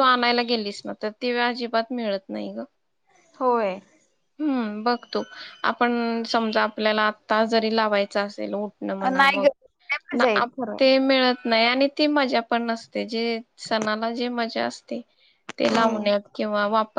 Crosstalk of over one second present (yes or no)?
no